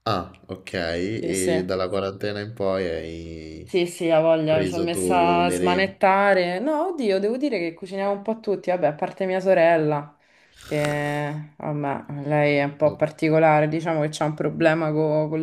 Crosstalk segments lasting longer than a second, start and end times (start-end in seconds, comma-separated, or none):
4.4-6.0